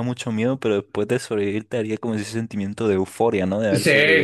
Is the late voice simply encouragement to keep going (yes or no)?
no